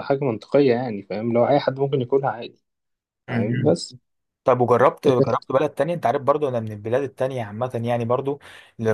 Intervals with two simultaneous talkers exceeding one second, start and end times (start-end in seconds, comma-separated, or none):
none